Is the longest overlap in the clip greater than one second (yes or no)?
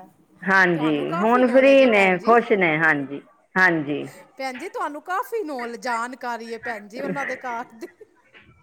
yes